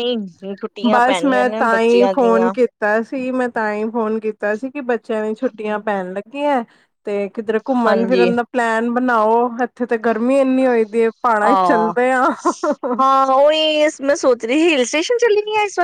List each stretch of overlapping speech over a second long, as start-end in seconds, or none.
0.9-2.5